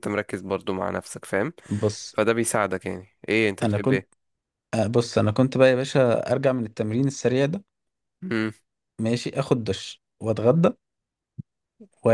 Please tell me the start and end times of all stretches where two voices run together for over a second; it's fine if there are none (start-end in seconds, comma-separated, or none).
none